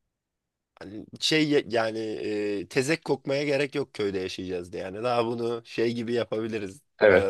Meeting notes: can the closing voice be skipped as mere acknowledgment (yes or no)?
no